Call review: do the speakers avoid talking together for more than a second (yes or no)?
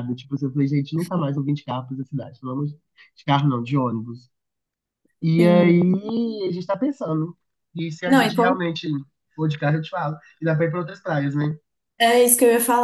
yes